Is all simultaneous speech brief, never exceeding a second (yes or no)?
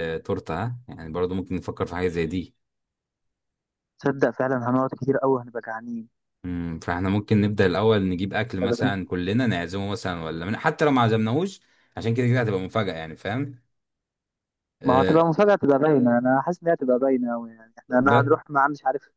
yes